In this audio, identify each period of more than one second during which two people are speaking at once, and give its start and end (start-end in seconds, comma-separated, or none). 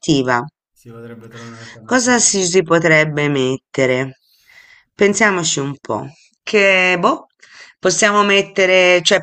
none